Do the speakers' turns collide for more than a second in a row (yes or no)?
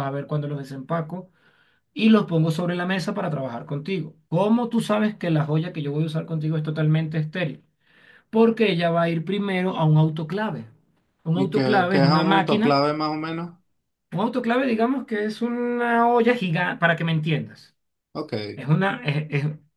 yes